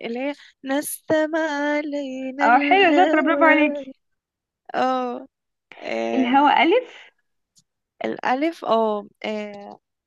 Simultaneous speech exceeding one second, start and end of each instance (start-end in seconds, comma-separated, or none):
2.4-3.7